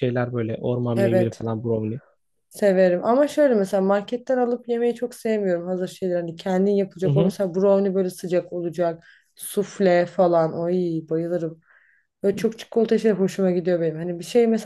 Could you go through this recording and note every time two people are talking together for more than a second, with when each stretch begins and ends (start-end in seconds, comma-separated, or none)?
none